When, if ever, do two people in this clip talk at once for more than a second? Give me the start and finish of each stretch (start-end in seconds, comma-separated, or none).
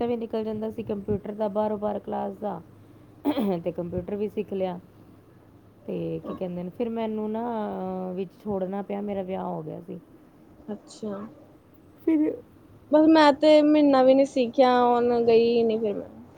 none